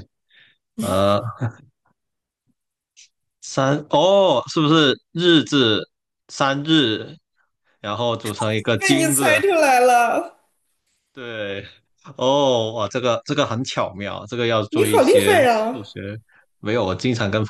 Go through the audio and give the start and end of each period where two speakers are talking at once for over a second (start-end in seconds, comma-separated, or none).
14.7-15.9